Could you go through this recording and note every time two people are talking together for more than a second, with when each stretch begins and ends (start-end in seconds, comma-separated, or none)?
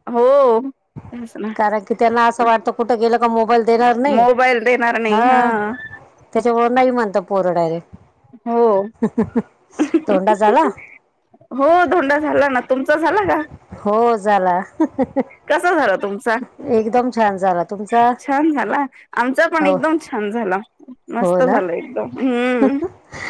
none